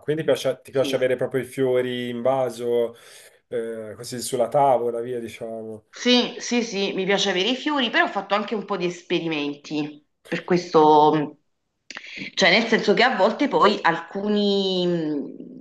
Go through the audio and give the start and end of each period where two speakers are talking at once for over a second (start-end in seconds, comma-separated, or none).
none